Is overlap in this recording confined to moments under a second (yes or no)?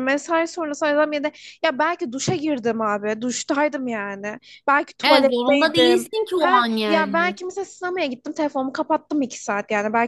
no